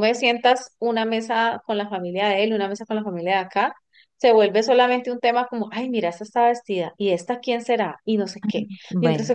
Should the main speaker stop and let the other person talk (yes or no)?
no